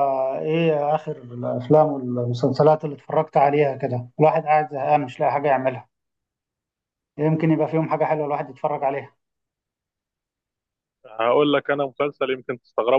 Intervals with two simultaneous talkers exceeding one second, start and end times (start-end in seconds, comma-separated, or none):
none